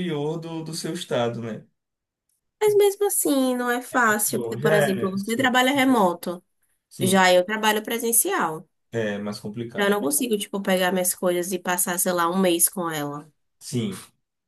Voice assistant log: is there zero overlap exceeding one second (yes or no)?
no